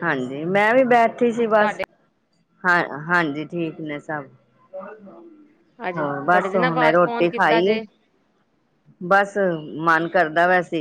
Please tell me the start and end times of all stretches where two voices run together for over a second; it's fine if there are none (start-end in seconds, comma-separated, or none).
6.0-7.8